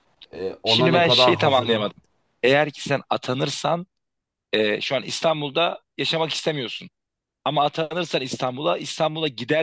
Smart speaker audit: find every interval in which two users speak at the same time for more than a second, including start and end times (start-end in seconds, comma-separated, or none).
0.7-1.9